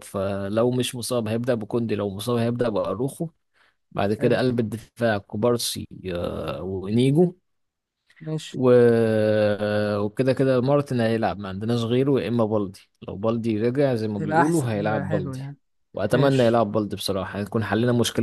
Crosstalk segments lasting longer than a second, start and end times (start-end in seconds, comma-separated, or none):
14.2-15.4